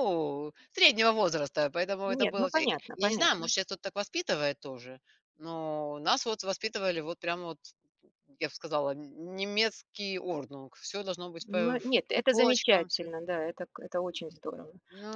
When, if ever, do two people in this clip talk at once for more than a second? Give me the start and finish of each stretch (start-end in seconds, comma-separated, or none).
2.1-3.5, 11.5-13.1